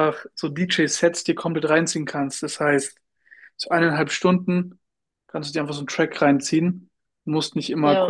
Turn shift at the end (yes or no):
no